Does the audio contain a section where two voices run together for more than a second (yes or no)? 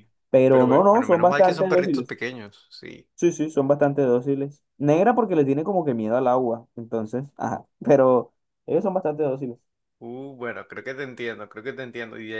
yes